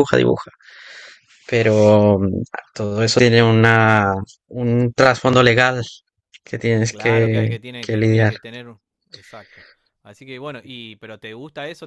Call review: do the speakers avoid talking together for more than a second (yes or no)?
no